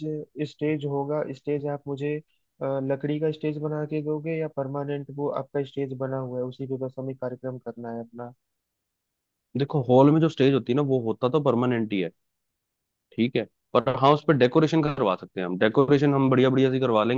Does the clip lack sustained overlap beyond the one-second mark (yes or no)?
yes